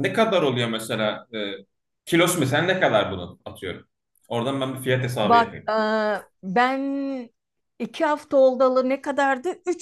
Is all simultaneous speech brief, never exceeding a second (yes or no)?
yes